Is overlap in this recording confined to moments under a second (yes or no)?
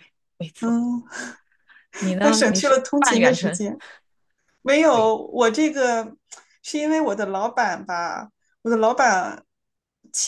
no